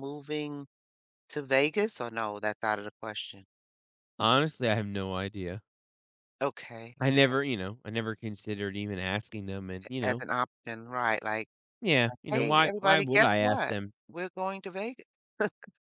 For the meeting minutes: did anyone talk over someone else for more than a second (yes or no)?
yes